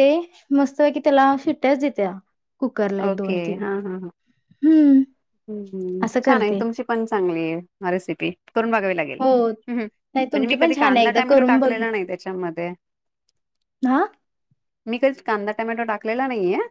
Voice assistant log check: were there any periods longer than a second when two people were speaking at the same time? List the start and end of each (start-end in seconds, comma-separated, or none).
10.1-11.7